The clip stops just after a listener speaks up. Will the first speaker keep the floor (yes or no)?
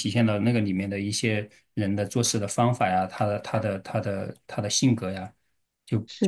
no